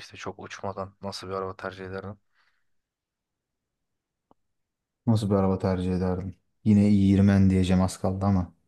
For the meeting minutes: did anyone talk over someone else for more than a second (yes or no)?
no